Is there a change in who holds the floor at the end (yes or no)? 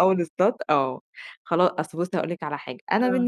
no